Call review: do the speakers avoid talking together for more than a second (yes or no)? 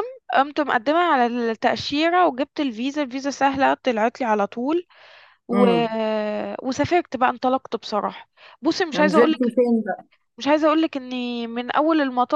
yes